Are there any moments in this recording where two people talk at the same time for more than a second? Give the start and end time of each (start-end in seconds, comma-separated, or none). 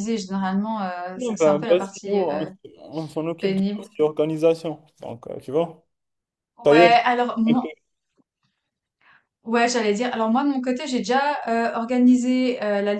1.1-2.5